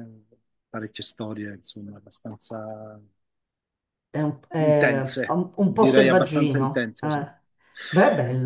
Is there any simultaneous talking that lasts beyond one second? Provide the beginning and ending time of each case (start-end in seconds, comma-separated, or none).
4.6-7.2